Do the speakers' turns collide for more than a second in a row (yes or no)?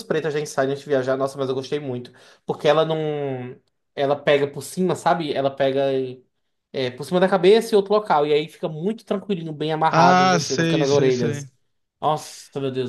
yes